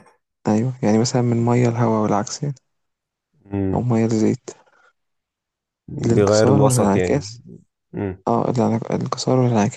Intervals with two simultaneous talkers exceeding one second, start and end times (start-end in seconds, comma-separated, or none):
6.0-7.3